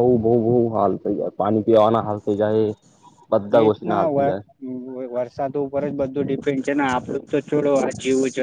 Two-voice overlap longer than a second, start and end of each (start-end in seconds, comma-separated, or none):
none